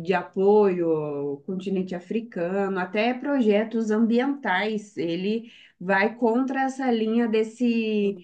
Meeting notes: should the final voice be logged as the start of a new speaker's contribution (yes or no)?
no